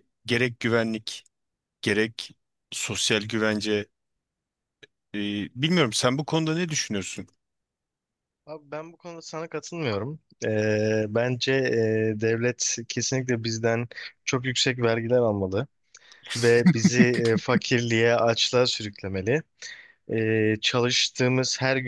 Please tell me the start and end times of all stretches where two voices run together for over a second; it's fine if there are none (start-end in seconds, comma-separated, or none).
none